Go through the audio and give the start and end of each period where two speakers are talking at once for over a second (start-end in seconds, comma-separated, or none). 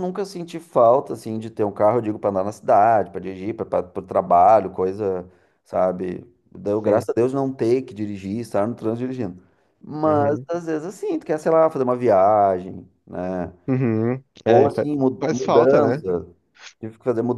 14.4-16.1